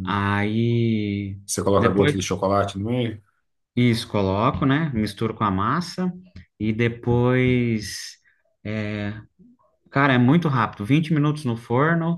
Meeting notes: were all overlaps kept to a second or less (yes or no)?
yes